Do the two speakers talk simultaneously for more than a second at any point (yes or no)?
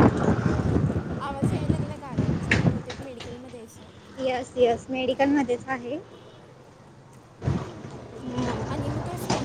no